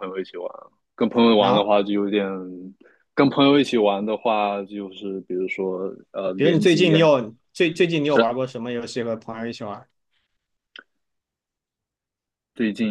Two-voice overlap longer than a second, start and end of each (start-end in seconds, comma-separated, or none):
none